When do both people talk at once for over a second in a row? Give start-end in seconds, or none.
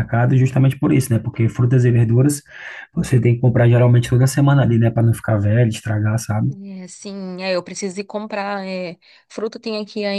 none